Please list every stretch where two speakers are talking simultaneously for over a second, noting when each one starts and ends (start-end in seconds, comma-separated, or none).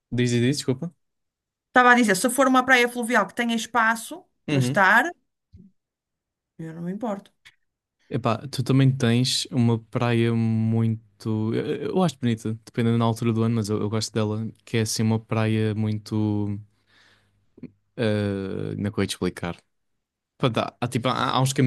none